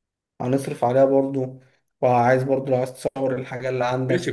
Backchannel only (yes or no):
no